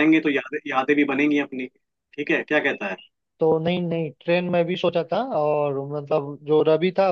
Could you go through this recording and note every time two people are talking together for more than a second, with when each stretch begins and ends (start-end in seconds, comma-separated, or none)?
none